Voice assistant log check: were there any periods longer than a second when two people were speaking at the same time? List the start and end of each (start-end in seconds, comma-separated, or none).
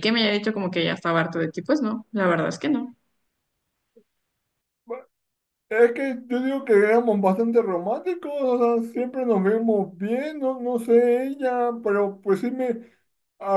none